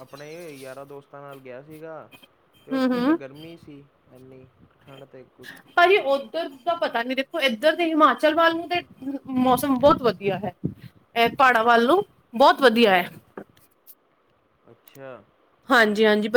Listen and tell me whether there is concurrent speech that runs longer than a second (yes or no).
no